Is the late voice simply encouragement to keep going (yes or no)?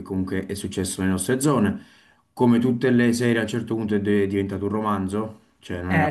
yes